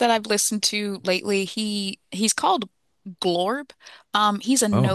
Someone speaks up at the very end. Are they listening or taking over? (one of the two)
listening